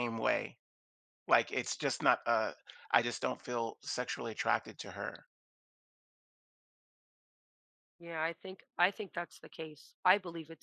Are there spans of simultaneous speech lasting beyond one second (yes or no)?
no